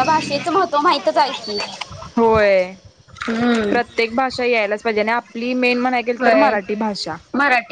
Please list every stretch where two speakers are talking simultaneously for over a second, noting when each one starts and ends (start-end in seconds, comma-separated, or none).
none